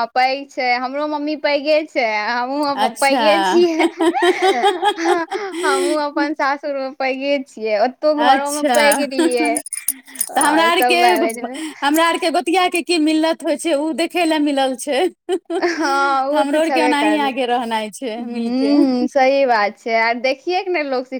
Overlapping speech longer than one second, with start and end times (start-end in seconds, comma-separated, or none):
16.4-18.7